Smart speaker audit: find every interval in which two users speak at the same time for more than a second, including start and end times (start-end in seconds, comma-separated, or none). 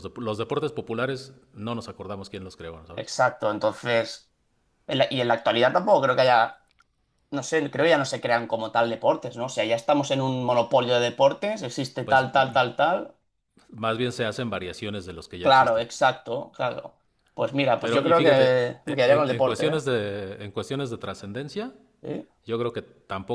17.8-19.8